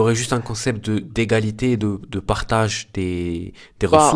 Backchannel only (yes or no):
no